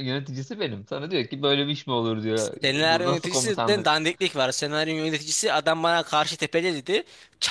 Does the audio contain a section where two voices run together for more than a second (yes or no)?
yes